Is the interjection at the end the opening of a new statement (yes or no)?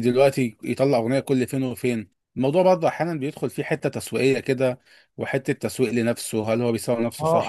yes